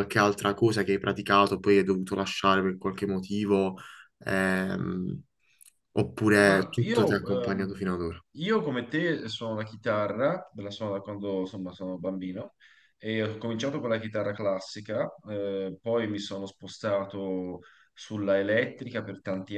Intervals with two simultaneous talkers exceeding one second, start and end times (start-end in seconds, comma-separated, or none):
6.4-7.8